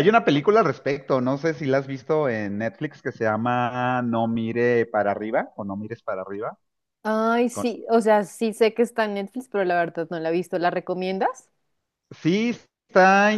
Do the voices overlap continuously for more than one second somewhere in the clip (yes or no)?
no